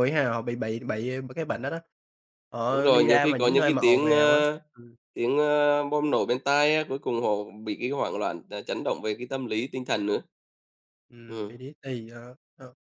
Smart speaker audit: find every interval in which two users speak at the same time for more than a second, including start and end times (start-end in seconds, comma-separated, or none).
2.7-4.4